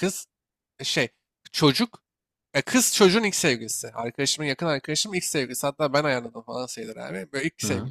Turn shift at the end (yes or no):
no